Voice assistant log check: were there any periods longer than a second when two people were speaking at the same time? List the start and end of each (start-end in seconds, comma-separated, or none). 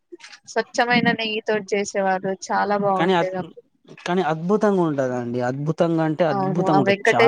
none